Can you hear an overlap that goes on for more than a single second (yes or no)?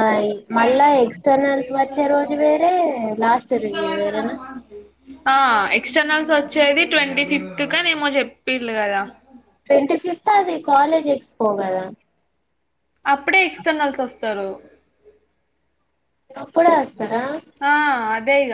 no